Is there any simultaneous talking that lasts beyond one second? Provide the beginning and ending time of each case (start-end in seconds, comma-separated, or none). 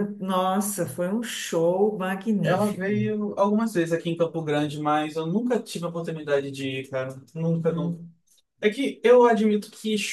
none